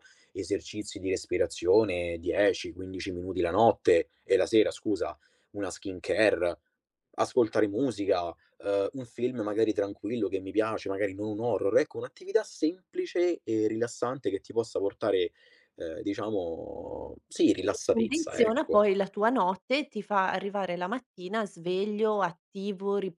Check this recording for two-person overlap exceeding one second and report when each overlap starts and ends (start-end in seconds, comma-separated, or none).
17.5-18.9